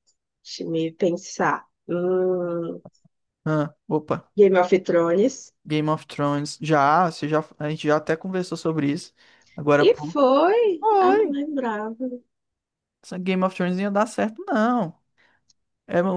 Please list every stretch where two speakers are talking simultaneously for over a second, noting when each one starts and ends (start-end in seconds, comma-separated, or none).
none